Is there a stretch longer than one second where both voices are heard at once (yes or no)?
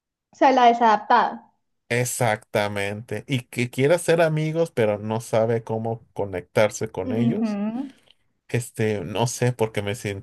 no